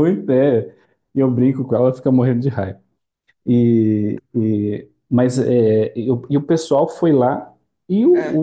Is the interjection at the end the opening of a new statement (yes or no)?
no